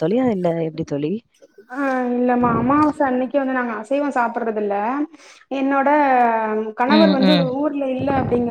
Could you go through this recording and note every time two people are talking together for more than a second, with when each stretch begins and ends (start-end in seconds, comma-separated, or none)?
none